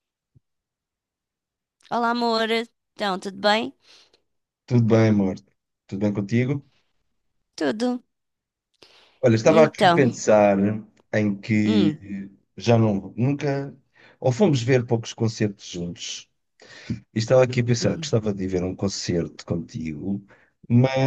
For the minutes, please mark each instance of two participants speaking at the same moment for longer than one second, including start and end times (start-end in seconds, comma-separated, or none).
none